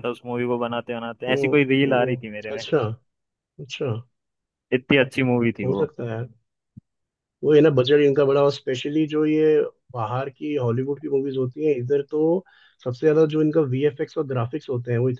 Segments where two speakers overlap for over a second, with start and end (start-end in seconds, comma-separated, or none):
1.3-2.6